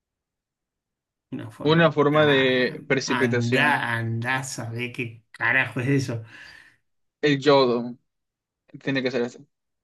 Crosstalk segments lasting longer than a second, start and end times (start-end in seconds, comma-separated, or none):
1.6-3.8